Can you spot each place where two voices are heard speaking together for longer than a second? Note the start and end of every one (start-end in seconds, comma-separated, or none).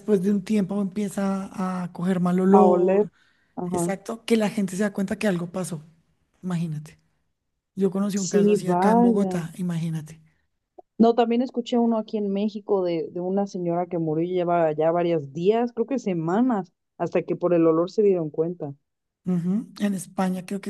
8.1-9.4